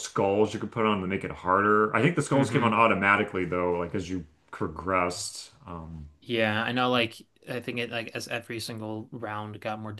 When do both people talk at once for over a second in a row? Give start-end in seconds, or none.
none